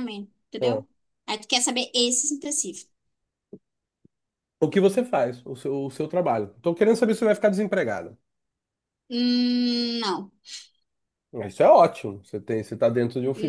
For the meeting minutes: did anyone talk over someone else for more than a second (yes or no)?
no